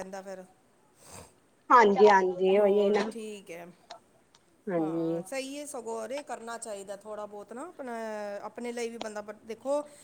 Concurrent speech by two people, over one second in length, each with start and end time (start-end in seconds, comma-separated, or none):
none